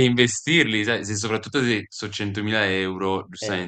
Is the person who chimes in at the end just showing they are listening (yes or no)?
no